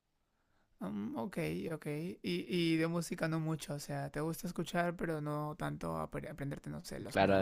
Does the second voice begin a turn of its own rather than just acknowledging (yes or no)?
yes